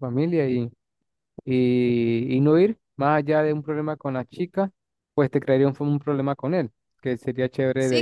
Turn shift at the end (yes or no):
yes